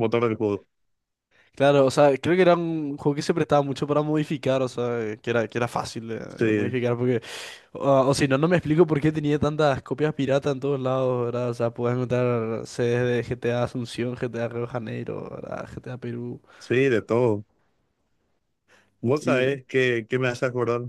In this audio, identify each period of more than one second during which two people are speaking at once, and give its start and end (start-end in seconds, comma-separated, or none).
none